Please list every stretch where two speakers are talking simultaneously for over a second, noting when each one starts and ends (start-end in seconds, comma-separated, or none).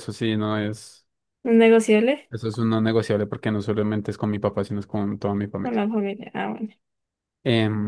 none